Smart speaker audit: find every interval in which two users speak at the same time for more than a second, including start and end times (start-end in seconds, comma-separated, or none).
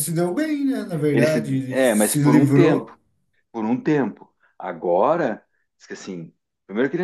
1.1-3.0